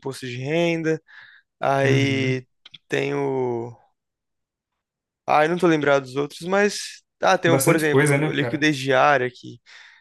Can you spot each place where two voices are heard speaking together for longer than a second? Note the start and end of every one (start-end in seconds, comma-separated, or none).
7.4-8.7